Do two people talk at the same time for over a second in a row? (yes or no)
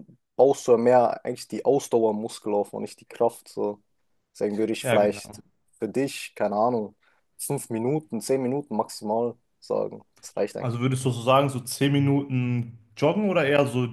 no